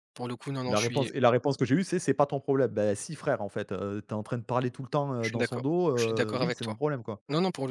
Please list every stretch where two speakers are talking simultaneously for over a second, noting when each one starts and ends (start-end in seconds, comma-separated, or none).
5.2-6.8